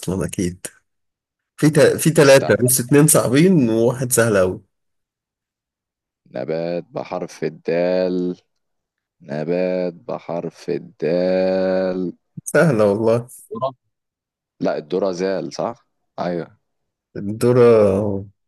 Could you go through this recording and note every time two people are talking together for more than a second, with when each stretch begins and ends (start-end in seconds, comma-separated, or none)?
none